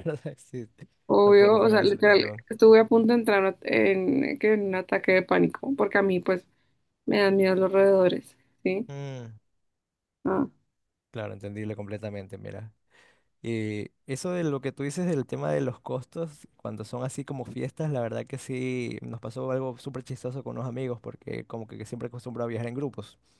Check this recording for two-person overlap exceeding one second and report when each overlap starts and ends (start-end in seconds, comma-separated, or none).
1.2-2.4